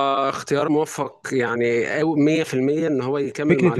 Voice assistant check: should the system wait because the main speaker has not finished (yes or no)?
no